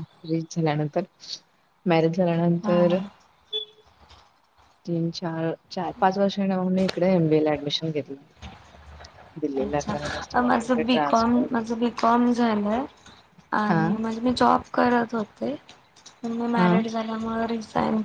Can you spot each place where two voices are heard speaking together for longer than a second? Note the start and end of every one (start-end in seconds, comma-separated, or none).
9.6-11.5